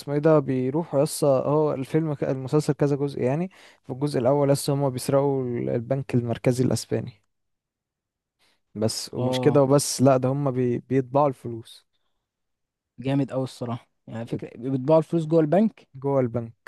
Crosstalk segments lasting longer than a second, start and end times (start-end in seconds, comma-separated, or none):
none